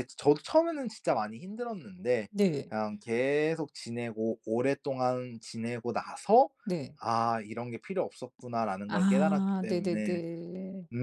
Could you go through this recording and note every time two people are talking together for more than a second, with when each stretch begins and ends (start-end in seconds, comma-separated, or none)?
8.9-10.2